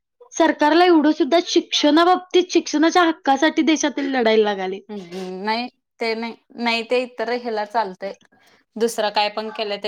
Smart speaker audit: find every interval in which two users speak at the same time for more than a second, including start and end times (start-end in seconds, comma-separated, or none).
none